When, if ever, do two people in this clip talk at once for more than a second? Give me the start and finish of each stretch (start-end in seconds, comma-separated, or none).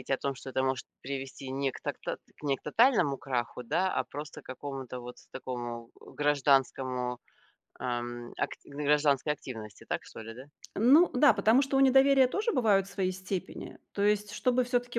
none